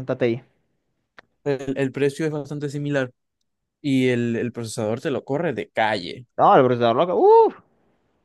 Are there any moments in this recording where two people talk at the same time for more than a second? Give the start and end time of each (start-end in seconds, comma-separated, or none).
none